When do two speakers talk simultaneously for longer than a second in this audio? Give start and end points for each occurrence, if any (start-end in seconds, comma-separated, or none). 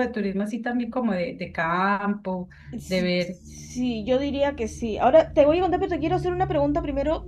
none